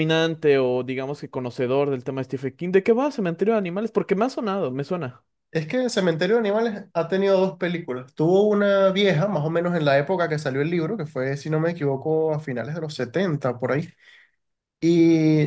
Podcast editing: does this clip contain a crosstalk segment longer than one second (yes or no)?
no